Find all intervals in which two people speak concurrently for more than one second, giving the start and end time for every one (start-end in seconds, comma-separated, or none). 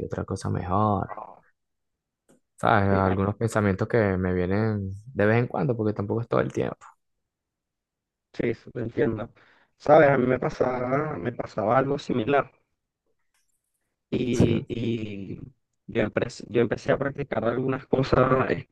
none